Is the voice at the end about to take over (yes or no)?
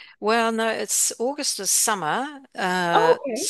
no